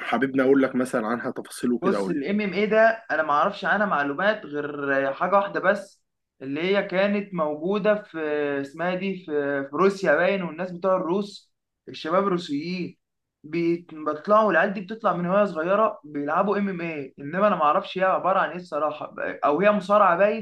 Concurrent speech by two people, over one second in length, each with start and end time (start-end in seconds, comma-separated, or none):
none